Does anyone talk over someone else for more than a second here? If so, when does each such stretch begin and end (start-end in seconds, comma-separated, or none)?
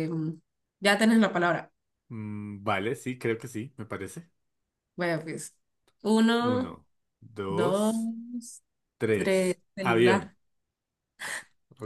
9.1-10.3